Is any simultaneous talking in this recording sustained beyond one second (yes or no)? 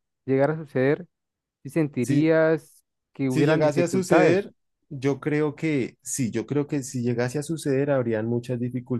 yes